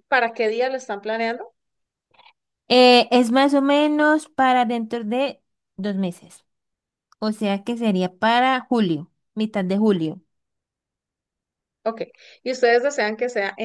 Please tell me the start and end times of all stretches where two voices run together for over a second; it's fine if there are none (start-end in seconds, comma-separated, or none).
none